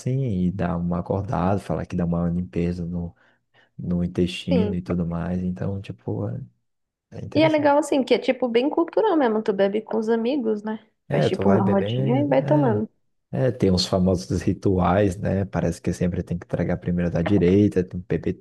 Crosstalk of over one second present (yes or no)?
yes